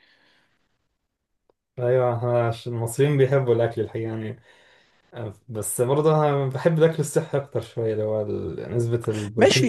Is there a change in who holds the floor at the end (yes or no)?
yes